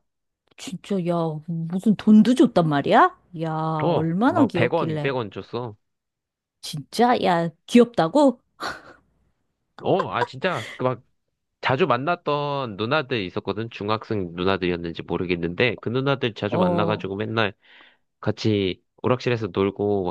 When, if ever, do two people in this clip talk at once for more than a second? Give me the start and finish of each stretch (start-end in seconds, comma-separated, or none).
3.9-5.1